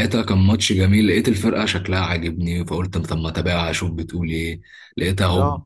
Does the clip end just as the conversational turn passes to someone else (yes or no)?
no